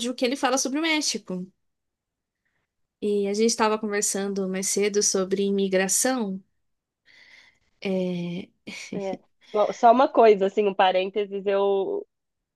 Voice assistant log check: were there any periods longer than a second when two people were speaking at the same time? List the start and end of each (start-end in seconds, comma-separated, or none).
none